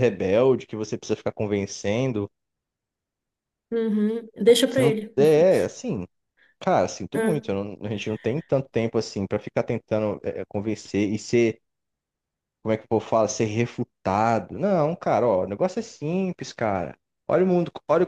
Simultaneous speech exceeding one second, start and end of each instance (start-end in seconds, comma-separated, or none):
none